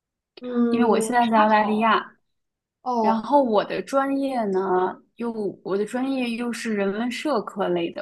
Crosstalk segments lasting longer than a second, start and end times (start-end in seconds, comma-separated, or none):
0.7-2.0